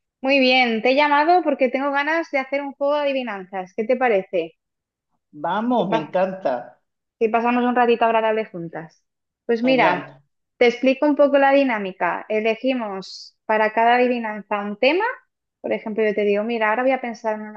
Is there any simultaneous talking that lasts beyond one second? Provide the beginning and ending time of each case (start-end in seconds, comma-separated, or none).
none